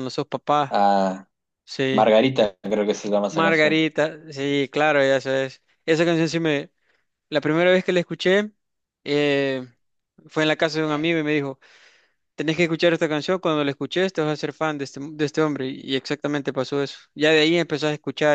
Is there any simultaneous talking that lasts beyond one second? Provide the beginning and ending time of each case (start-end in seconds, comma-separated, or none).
none